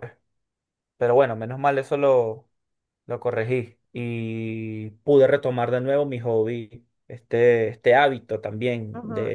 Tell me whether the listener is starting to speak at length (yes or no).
yes